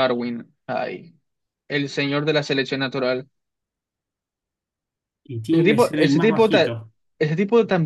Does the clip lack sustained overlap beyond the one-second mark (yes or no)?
no